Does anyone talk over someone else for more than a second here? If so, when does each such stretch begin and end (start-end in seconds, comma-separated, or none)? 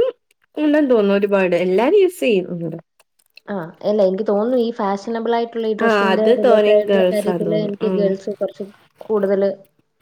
5.9-8.1